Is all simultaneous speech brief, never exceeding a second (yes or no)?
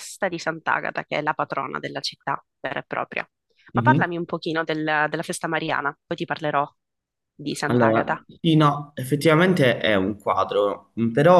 yes